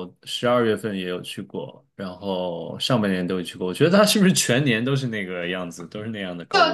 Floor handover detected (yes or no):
yes